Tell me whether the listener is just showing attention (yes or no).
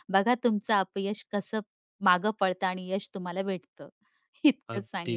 no